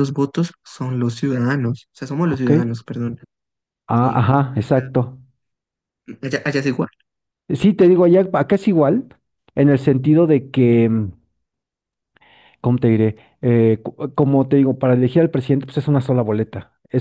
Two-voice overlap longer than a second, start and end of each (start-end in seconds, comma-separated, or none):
none